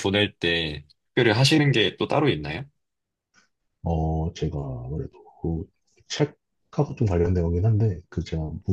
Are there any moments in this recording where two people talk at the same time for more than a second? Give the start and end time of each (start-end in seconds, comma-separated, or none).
none